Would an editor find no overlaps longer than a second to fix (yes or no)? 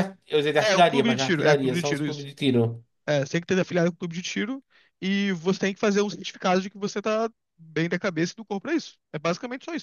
no